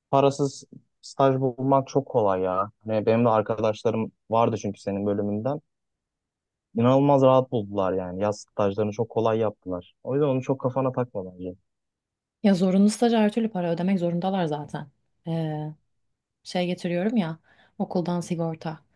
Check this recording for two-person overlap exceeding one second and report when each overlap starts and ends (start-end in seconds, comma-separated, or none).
none